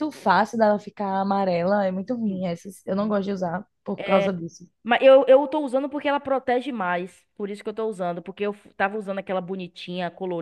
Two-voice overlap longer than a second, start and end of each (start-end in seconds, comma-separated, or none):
none